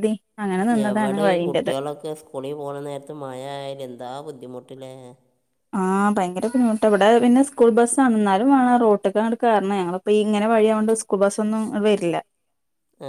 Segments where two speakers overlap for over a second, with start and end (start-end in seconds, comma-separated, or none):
none